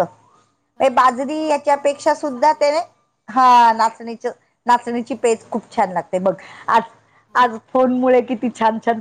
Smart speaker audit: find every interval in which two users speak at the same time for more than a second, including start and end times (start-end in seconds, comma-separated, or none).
1.0-2.7